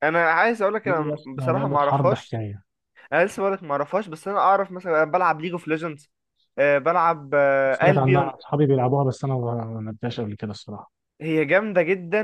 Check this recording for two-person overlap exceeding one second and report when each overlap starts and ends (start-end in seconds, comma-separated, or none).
0.8-2.4